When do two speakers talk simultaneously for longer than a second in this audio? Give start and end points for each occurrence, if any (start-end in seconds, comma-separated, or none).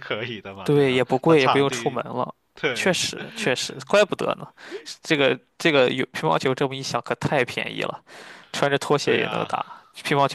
0.6-2.0